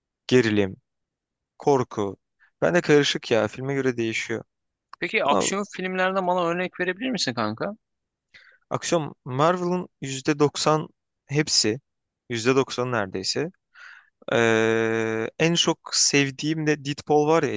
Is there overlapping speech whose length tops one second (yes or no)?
no